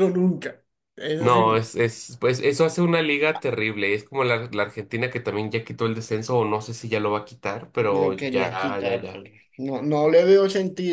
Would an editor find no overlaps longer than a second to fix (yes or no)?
no